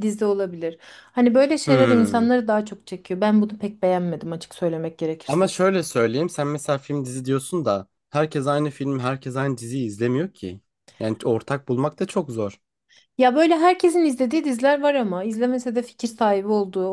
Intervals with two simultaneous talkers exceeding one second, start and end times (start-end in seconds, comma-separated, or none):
none